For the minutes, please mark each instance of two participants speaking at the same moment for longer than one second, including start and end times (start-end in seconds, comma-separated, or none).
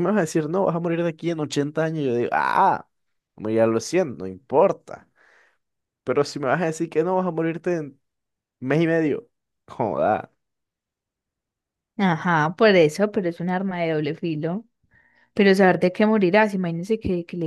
none